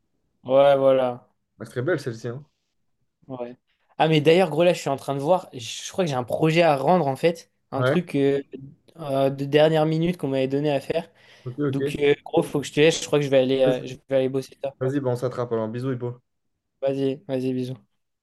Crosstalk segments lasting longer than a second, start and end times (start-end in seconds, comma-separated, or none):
none